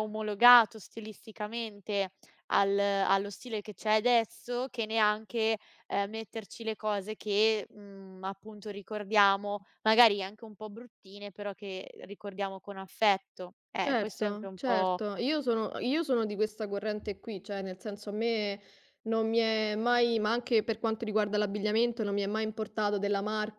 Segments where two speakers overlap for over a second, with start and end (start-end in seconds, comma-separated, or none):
13.8-15.0